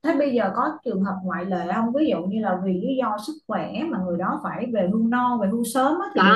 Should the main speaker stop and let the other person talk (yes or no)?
yes